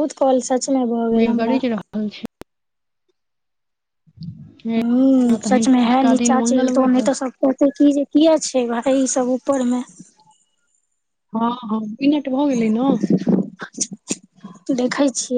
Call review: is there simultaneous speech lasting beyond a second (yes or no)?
yes